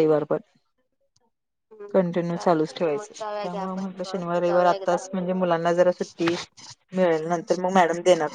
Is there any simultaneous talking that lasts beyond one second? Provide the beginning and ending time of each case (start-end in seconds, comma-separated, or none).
2.3-5.0